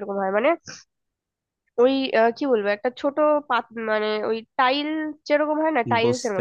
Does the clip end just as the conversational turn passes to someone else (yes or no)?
yes